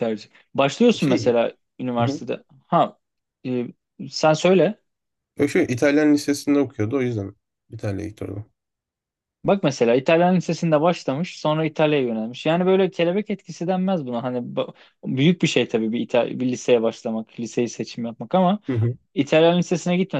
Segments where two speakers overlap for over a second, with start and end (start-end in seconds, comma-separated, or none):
none